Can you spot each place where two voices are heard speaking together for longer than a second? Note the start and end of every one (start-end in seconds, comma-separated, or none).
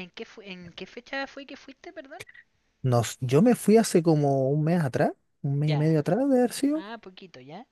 none